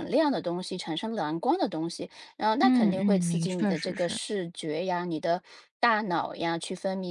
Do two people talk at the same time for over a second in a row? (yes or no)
yes